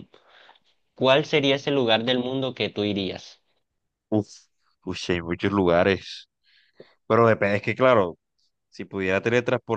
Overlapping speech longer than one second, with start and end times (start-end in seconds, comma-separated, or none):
none